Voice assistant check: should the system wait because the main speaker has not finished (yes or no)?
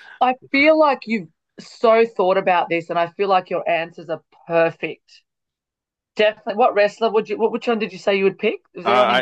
no